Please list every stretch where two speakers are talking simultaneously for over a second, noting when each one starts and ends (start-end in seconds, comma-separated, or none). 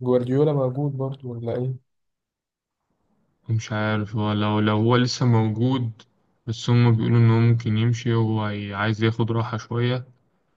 none